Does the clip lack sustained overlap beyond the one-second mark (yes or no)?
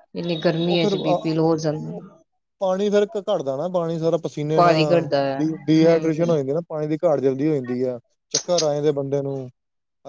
yes